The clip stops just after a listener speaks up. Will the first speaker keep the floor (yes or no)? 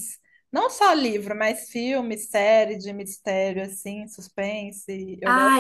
no